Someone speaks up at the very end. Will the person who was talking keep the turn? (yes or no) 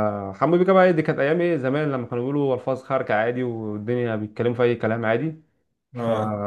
yes